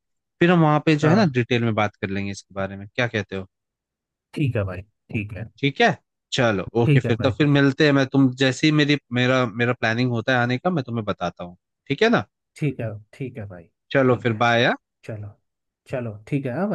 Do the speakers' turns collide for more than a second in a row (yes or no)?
no